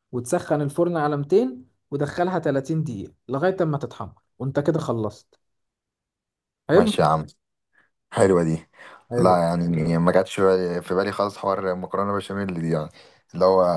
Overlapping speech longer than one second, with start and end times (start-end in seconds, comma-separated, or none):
none